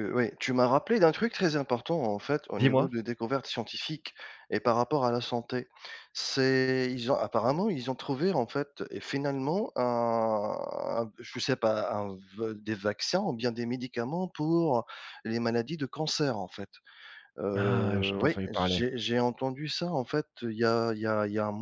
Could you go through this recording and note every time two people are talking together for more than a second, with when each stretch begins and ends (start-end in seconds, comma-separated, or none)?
17.5-18.8